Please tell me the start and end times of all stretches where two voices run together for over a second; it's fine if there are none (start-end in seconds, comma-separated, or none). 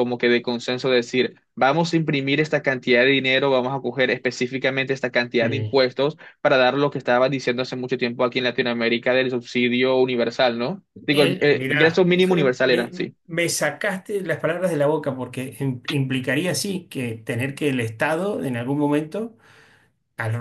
11.1-13.2